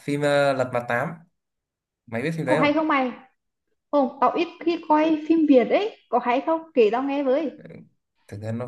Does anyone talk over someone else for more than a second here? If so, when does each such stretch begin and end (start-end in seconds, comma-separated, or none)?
none